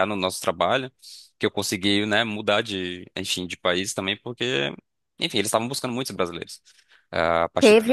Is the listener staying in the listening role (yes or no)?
no